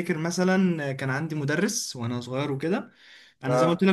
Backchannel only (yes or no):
yes